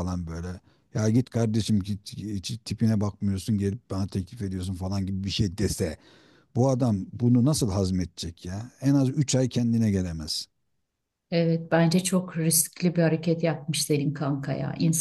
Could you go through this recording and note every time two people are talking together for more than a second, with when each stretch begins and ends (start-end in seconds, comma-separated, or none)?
none